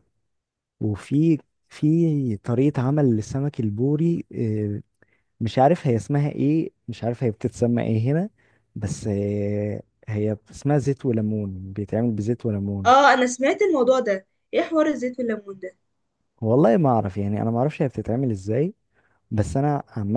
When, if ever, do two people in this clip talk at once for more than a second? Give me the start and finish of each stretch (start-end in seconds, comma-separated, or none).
none